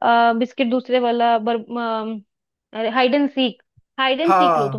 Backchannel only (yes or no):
yes